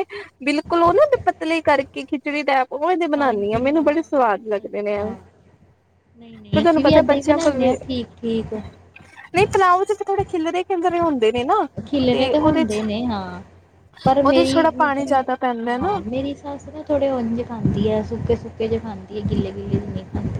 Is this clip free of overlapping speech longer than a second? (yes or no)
no